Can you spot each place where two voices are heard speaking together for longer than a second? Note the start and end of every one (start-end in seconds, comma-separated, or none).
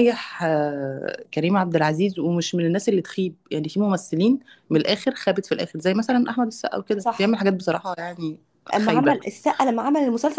none